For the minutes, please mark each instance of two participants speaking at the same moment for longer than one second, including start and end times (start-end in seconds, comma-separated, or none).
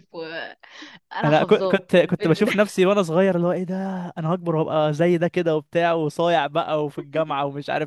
1.2-2.5